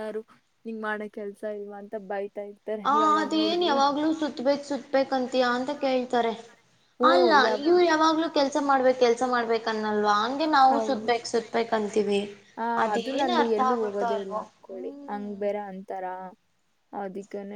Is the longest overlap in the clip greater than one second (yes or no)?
yes